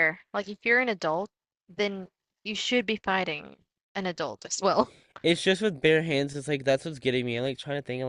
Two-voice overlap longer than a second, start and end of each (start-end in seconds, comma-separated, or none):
none